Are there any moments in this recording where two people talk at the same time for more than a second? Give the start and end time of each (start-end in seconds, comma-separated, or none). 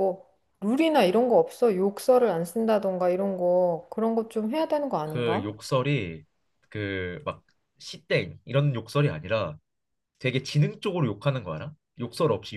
none